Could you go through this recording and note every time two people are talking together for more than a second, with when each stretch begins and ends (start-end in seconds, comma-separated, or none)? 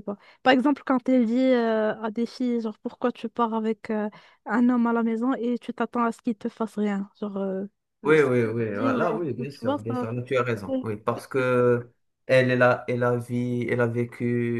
8.0-10.1